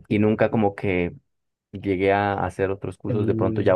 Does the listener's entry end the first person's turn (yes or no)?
no